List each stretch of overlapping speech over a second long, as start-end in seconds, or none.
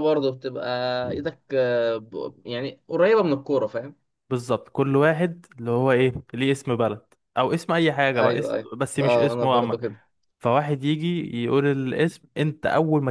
8.2-9.8